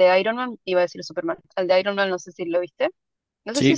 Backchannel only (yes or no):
no